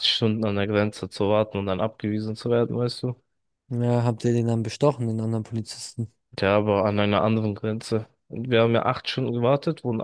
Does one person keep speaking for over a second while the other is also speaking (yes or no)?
no